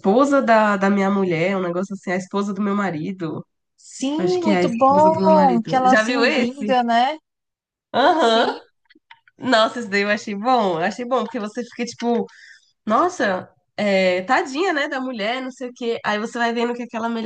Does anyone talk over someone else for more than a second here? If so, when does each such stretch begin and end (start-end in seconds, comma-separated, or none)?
4.2-6.8